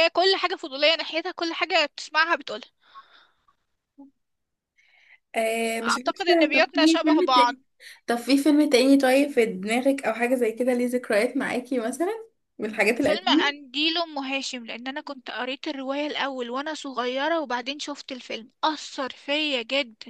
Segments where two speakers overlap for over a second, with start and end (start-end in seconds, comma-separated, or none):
5.8-7.5